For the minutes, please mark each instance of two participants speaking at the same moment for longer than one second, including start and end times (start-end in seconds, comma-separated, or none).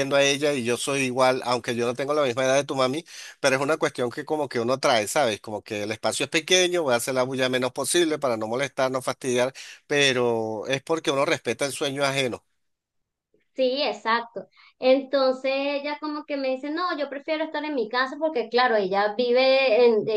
none